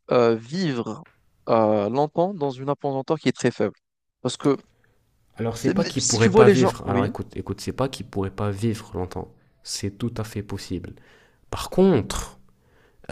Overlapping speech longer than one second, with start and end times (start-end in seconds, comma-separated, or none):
5.6-7.1